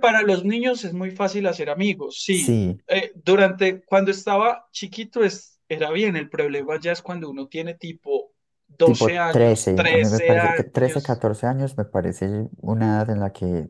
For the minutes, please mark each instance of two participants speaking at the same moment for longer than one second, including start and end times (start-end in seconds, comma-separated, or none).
8.8-11.2